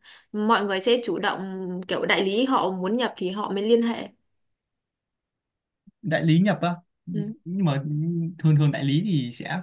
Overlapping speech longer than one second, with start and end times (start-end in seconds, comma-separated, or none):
none